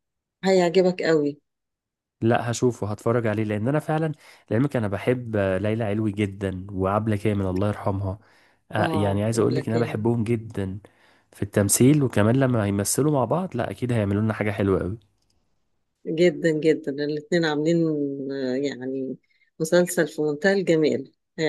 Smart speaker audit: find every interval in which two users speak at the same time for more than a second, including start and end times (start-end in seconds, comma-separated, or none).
8.8-10.1